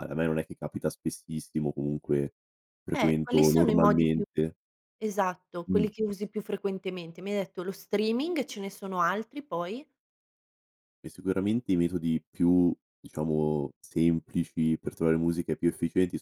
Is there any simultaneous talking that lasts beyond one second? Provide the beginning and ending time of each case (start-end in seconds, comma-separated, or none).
2.9-4.2